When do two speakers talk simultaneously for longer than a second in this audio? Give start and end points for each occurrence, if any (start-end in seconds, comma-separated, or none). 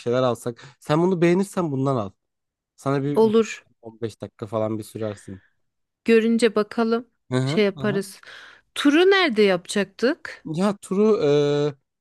none